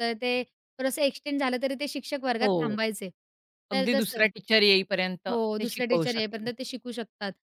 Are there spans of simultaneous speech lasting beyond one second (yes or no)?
yes